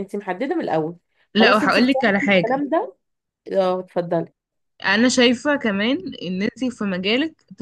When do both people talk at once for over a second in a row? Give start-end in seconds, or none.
1.4-2.6